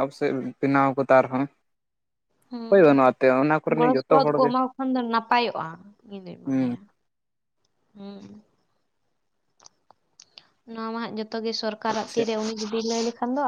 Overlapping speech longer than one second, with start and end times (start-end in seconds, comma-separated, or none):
2.7-4.5